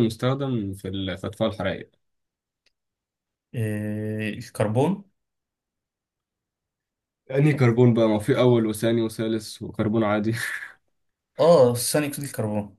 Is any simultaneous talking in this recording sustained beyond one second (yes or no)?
no